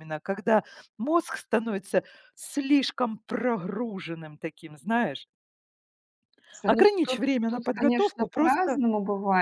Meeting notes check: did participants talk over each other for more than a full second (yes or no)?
yes